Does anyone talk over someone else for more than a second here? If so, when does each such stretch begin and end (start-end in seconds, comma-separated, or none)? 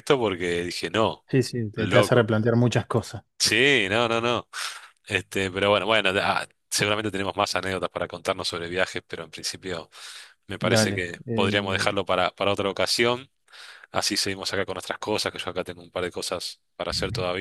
10.6-12.0